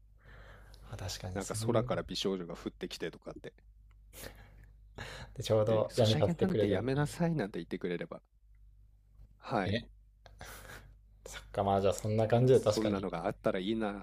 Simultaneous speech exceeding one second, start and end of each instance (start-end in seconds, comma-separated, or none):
5.7-7.1